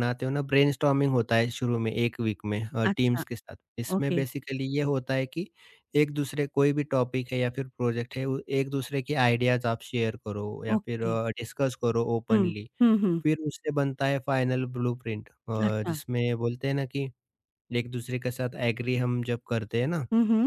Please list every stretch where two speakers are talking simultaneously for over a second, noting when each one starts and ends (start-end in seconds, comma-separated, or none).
none